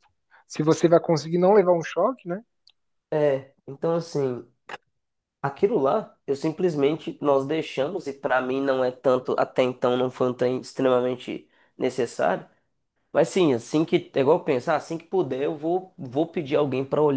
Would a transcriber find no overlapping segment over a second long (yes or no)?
yes